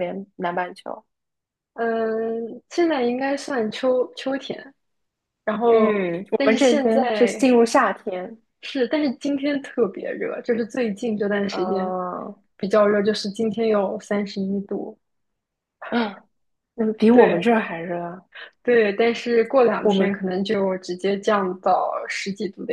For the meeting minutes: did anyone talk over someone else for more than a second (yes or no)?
yes